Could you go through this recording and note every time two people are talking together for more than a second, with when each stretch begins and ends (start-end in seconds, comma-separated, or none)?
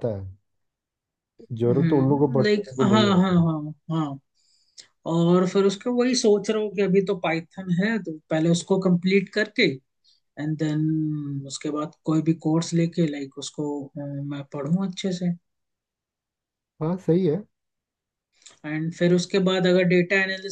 1.6-3.5